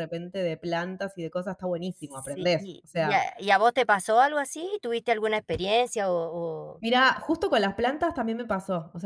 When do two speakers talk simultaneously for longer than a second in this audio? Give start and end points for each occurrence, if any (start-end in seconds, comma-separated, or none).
1.9-3.2